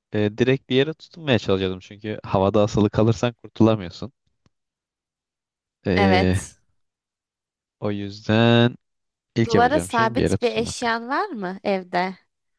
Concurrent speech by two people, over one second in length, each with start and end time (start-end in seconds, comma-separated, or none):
9.4-11.0